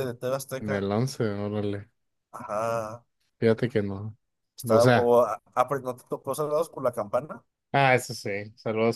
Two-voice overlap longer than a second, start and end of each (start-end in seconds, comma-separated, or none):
none